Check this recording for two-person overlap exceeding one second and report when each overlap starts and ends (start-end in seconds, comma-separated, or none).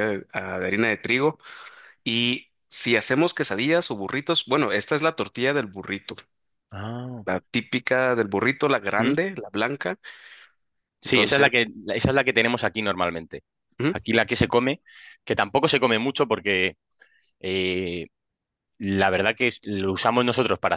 none